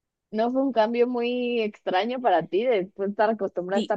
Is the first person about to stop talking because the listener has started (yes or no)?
yes